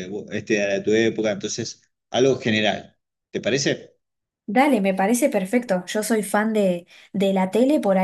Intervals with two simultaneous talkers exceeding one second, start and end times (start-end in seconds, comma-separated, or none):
none